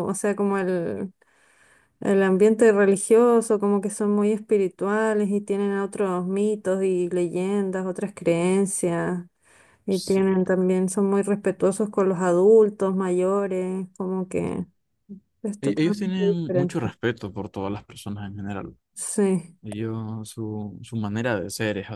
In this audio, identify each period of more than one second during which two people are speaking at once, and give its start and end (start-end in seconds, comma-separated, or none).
15.6-16.9